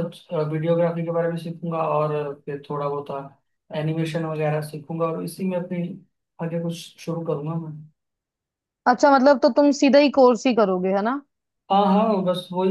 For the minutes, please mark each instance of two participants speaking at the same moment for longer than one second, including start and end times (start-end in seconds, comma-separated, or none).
none